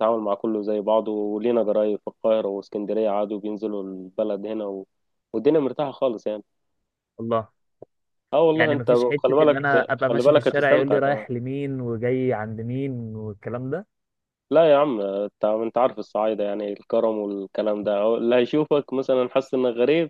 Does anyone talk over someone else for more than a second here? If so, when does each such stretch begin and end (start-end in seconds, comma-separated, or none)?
8.5-11.3